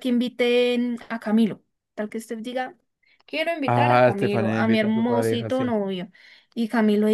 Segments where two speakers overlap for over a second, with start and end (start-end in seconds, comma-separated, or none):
3.6-5.7